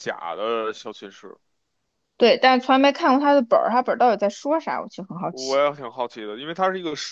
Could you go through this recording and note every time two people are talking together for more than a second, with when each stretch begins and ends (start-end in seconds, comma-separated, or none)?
none